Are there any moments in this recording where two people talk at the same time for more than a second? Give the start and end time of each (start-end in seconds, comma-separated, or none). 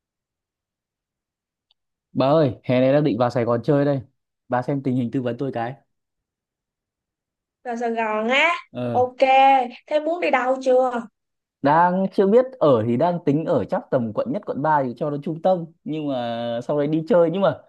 none